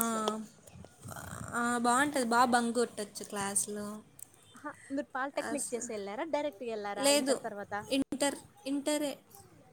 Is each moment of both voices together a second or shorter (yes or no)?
yes